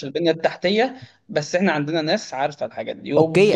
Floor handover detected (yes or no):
yes